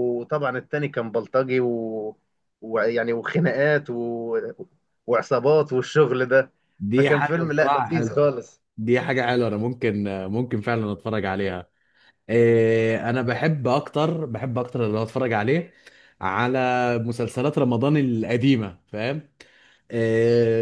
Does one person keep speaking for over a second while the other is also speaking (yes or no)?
yes